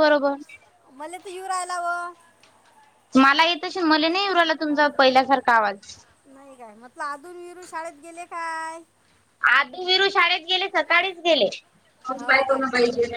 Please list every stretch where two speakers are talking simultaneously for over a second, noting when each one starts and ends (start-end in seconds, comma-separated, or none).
none